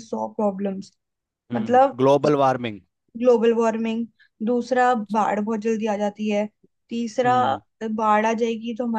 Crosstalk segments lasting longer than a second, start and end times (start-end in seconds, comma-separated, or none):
none